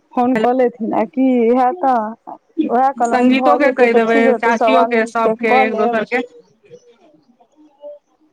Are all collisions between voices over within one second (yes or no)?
no